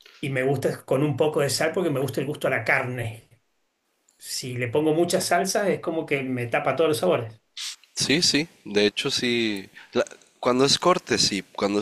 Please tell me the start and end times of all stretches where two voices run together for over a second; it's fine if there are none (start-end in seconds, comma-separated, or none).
none